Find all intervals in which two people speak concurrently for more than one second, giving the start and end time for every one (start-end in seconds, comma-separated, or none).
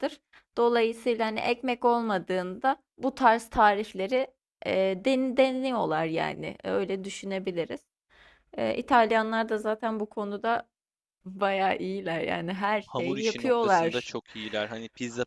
12.9-14.1